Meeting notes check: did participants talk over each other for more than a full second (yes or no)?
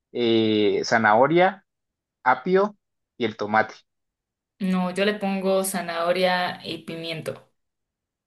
no